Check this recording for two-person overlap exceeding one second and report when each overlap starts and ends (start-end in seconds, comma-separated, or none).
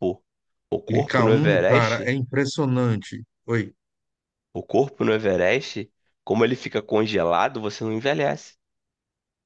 0.9-2.1